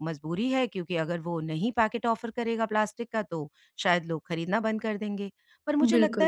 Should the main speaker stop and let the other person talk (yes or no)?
no